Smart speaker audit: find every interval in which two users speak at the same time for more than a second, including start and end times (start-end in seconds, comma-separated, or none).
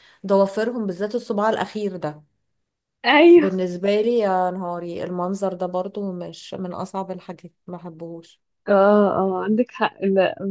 none